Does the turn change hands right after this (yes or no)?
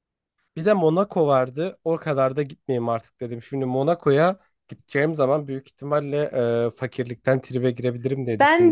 yes